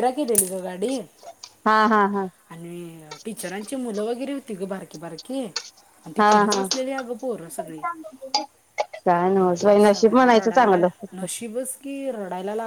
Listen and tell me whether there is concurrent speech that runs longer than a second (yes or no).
yes